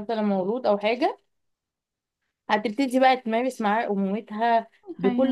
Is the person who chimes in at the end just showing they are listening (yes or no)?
yes